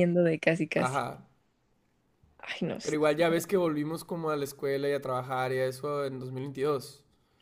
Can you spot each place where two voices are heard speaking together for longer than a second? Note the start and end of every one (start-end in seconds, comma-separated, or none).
none